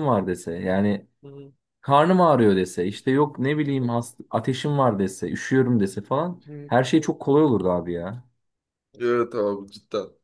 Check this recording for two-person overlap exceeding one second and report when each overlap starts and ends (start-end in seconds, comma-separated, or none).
none